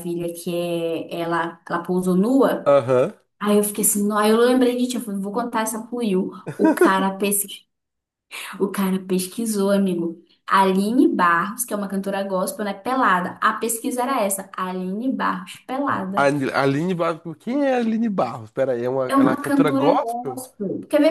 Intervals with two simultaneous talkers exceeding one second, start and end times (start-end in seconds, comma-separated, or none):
19.1-20.4